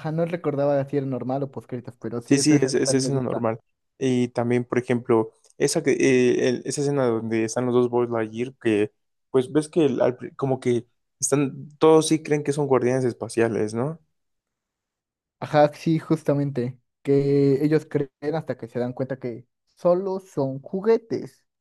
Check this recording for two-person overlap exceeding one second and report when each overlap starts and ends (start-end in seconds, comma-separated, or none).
2.2-3.5